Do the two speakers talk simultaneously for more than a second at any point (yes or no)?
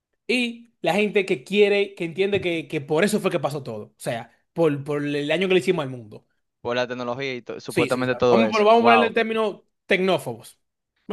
yes